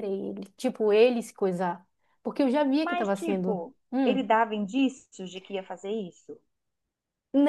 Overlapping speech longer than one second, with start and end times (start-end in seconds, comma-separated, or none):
2.8-4.2